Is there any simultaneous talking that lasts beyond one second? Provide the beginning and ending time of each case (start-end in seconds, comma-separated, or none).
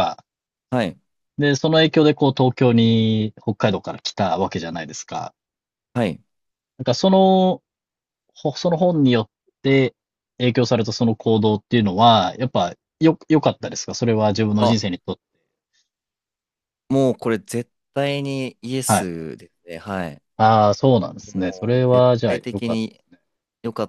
21.3-22.8